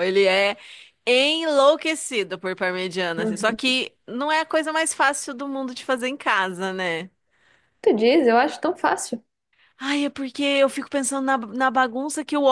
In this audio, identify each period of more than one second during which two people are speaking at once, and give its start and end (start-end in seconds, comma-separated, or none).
none